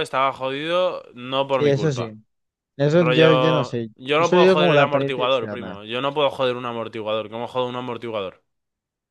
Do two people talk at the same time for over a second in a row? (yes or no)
yes